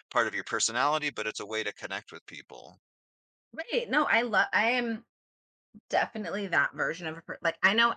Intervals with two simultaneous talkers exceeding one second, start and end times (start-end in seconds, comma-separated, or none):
none